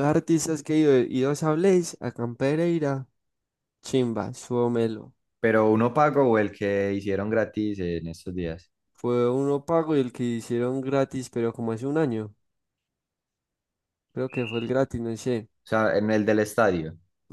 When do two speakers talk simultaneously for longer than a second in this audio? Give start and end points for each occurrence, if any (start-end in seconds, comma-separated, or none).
none